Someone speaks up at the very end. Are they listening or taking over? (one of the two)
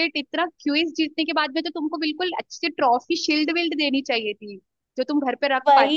taking over